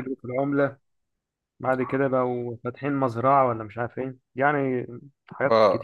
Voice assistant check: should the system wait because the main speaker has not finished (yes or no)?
no